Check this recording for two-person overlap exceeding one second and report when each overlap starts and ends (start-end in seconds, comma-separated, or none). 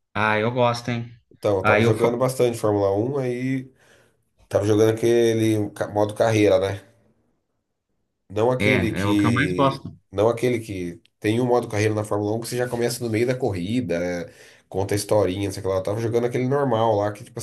8.6-9.9